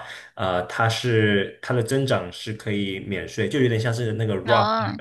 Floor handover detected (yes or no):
no